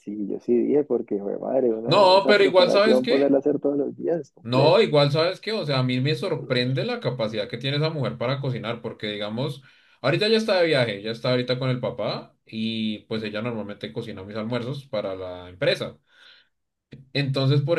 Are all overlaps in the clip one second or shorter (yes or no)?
no